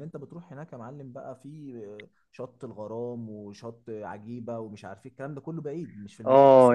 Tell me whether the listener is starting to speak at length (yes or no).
yes